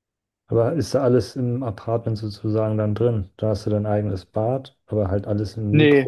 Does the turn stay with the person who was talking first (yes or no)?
no